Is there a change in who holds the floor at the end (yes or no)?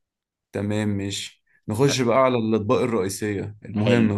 yes